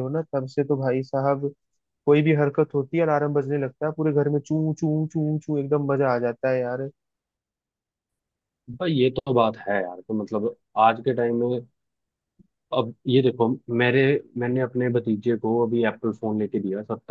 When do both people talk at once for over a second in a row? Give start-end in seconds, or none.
none